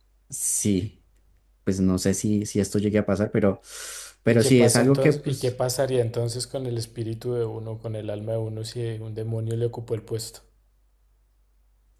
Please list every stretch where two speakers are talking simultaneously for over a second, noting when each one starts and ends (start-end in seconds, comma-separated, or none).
4.2-5.6